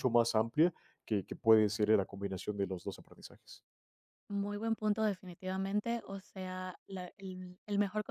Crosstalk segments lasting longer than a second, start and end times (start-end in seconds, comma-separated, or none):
none